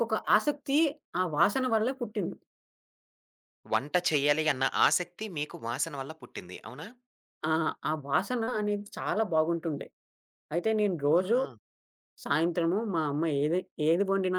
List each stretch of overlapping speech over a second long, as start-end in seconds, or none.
none